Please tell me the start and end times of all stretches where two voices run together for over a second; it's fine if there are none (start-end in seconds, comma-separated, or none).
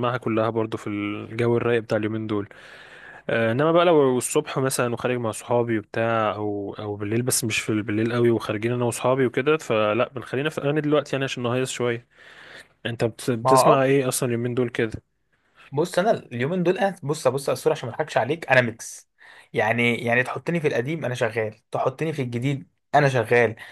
none